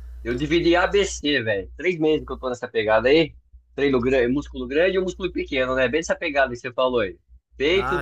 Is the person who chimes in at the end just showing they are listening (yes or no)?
no